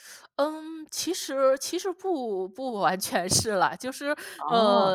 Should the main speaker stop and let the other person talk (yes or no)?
no